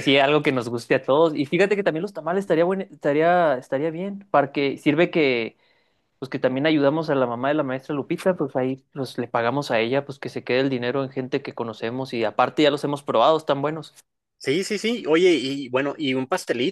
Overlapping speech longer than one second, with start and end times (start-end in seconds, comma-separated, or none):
none